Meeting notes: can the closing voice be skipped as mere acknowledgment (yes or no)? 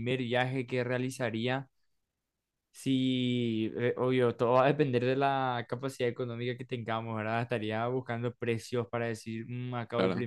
yes